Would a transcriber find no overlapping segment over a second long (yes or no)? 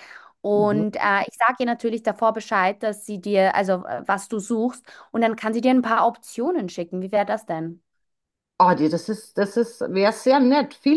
yes